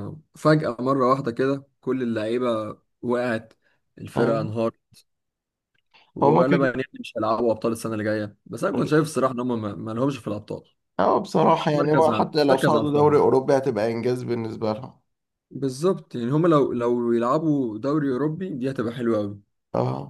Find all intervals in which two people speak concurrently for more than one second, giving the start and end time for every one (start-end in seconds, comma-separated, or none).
11.7-13.2